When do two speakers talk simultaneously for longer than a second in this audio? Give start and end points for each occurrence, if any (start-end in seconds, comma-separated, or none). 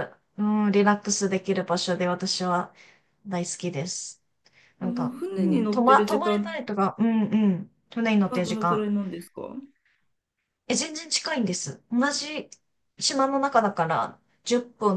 4.8-6.6